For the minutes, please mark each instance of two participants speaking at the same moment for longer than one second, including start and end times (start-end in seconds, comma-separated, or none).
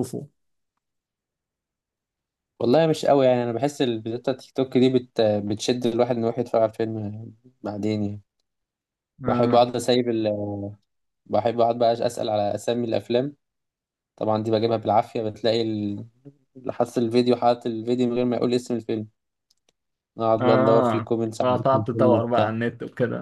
20.4-22.5